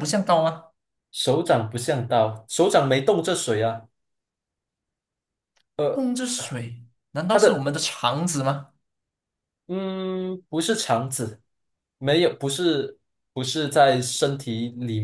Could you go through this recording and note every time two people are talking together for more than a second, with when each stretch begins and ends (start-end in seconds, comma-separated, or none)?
none